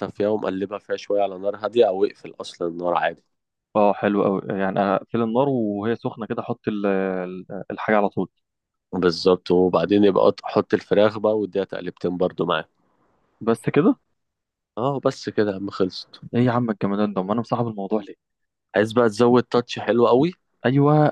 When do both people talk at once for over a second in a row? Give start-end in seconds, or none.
none